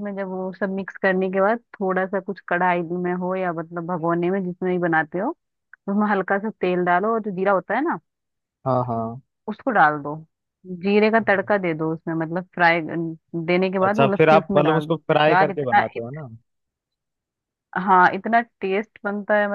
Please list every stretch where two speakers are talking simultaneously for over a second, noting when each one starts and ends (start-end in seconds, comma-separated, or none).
13.8-16.0